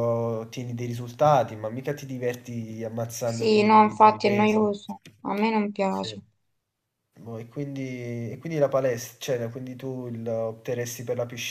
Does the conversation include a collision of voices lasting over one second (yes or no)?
yes